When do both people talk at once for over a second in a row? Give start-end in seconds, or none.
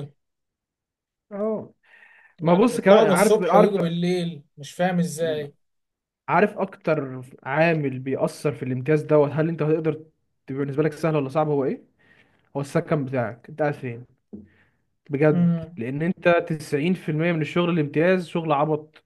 2.4-3.7